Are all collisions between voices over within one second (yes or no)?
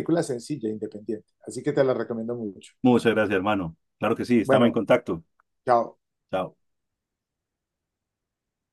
yes